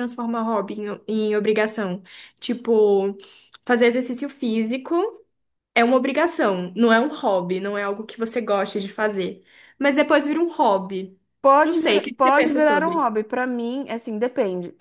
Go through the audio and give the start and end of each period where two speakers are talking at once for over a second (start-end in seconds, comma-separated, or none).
11.6-13.1